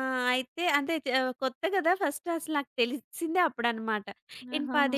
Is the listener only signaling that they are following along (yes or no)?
yes